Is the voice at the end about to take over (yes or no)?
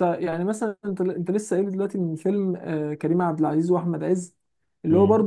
no